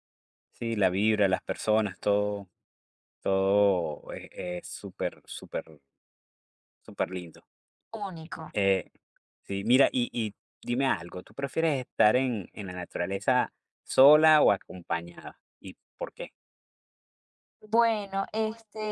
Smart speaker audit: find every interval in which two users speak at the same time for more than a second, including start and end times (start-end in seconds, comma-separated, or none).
none